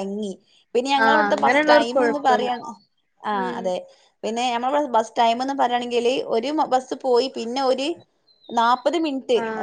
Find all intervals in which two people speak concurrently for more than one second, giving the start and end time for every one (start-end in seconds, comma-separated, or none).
1.1-2.5